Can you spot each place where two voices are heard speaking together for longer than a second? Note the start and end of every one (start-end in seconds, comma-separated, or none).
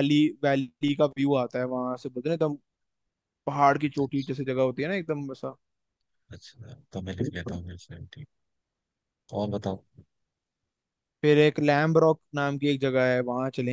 none